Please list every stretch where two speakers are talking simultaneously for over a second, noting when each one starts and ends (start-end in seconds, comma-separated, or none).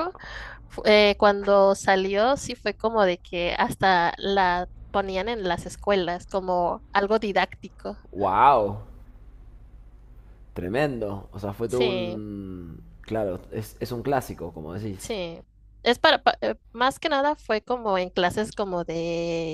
none